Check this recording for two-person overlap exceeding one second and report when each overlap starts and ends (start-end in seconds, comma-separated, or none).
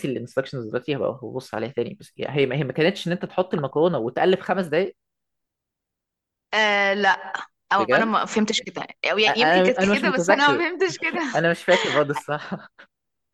9.3-10.6